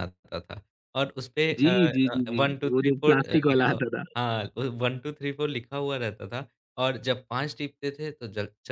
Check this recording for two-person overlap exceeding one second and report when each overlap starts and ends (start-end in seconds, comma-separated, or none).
1.6-3.8